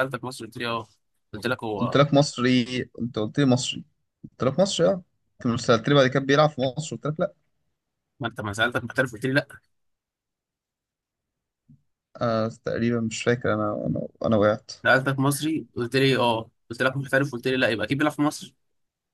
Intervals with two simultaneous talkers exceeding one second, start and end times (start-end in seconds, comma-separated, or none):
none